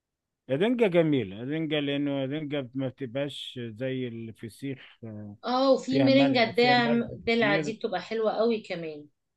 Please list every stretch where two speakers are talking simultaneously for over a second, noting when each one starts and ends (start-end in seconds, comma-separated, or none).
5.9-7.7